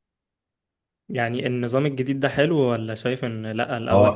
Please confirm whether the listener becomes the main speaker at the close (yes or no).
yes